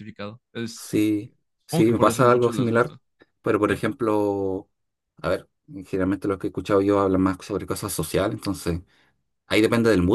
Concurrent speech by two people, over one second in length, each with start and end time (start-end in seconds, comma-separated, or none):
1.7-3.0